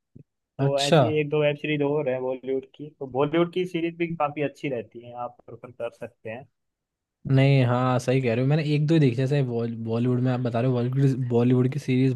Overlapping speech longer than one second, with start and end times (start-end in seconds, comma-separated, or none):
none